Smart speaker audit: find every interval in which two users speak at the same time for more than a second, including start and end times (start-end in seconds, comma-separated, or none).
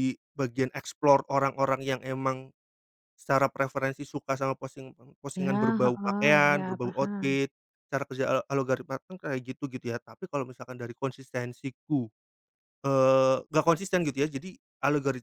5.4-7.4